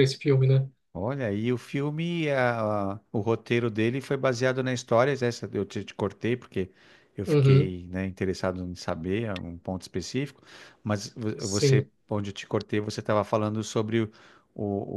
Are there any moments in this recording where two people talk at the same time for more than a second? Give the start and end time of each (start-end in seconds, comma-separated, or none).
none